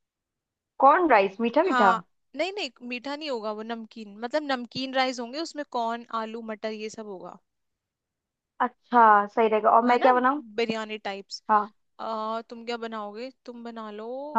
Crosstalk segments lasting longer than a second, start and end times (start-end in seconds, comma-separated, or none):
none